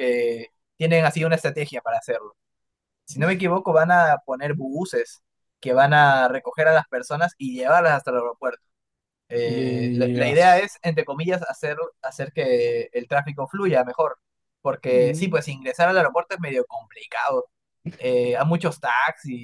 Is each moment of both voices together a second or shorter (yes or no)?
no